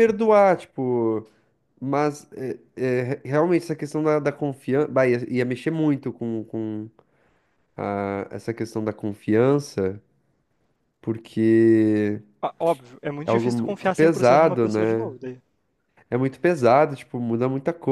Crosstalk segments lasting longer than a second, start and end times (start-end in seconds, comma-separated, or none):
13.2-15.1